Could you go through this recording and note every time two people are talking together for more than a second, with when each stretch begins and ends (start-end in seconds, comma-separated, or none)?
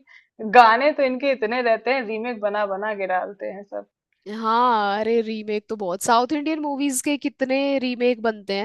none